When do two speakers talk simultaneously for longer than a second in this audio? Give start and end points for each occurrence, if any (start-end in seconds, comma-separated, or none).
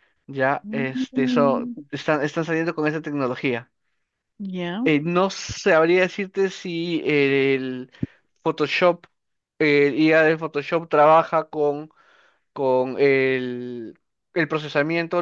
0.6-1.8